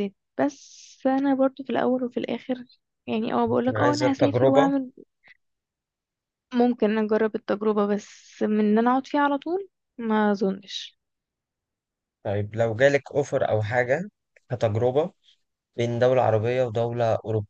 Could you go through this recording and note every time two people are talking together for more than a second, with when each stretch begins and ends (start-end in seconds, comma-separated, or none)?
3.5-4.7